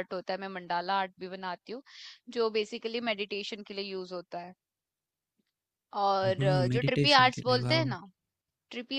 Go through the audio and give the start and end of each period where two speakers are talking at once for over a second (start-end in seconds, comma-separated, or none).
6.2-7.8